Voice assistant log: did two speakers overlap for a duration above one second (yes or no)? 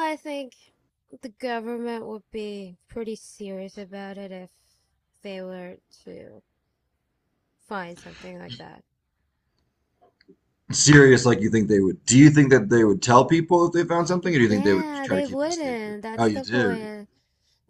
yes